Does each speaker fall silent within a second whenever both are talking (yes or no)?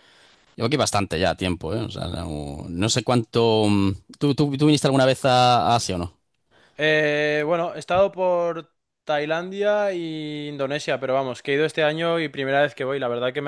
yes